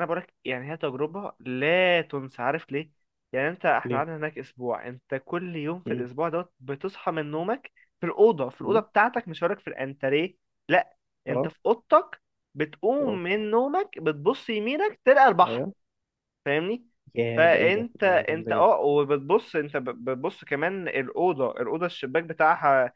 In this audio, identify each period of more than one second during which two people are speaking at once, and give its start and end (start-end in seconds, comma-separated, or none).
17.4-18.8